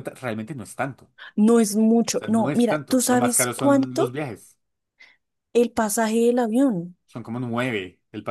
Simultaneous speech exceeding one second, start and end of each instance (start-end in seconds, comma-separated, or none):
2.1-4.2